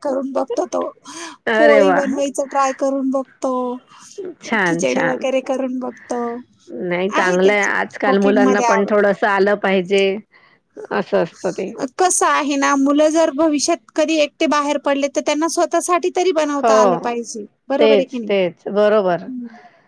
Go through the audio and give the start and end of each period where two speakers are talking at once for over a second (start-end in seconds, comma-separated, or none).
7.2-8.9